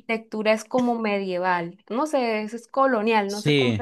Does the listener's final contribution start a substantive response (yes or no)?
yes